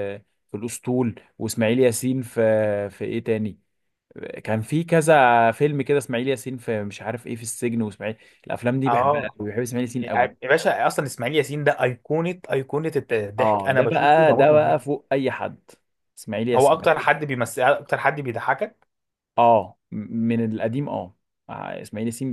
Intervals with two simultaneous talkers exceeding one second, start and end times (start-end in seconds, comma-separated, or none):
13.4-14.8